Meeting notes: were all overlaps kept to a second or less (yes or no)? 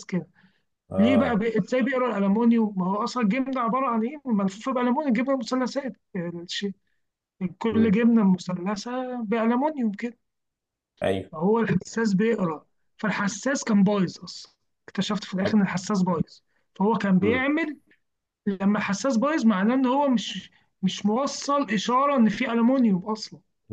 yes